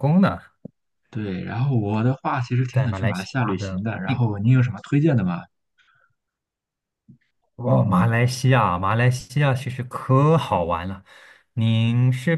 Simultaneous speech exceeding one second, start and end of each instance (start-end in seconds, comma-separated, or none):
2.7-4.2